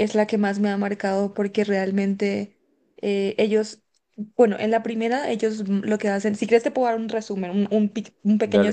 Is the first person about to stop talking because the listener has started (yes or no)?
yes